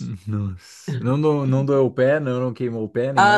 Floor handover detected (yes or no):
yes